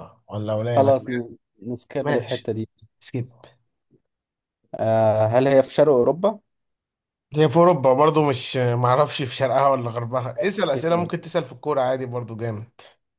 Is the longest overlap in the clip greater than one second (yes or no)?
no